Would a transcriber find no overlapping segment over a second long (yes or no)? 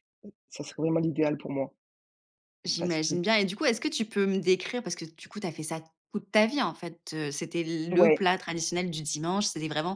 yes